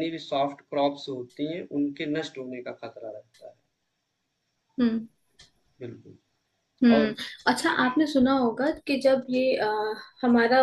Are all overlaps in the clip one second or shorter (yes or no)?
yes